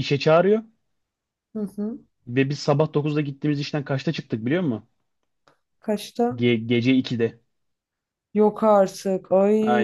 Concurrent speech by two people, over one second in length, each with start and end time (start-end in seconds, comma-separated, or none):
none